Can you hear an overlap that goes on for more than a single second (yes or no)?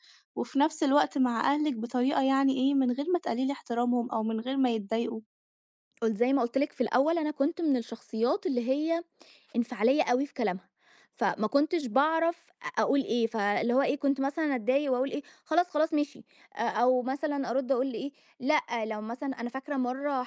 no